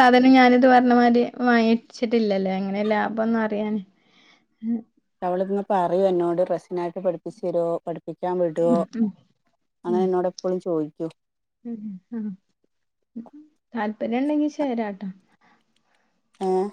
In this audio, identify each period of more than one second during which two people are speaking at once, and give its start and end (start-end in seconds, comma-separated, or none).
none